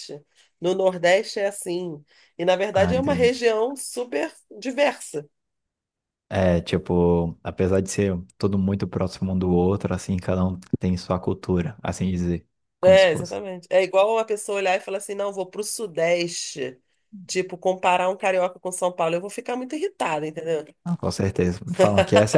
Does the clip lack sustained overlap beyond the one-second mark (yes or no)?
yes